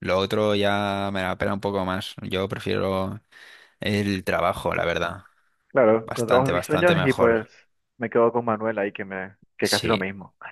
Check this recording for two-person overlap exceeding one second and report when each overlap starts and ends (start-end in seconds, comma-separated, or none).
6.0-7.4